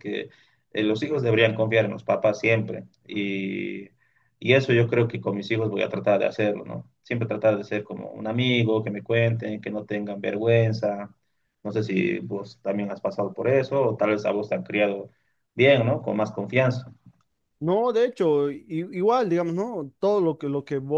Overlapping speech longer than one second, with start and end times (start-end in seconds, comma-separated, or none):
none